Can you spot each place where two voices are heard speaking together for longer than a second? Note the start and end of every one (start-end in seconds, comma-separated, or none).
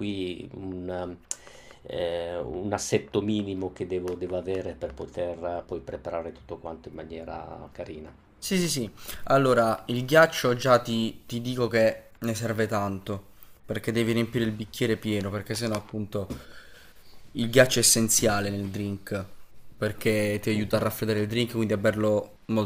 none